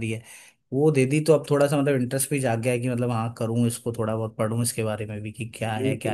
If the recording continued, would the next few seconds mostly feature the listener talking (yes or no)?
yes